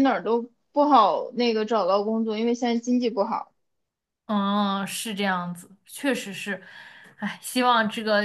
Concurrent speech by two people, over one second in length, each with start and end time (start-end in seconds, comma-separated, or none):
none